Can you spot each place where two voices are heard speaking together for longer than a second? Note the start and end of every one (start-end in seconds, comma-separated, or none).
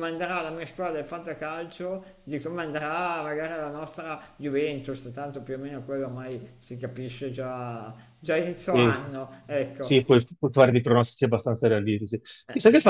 none